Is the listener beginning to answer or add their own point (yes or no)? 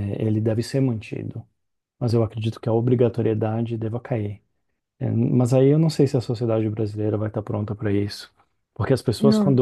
no